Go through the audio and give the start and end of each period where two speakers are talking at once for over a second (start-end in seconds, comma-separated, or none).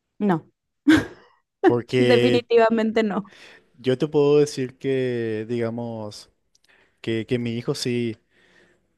none